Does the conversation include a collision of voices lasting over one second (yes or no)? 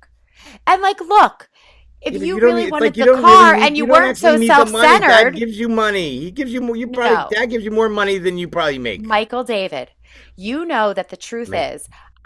yes